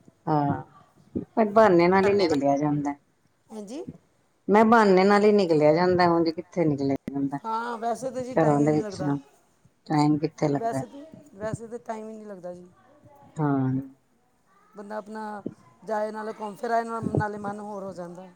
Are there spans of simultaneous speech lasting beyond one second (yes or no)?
no